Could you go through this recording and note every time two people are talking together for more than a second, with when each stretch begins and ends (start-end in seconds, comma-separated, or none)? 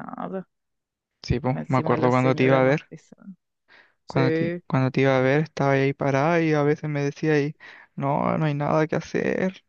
1.5-2.9